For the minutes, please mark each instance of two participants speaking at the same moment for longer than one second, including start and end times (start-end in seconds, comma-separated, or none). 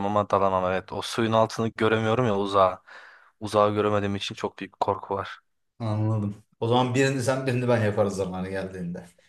none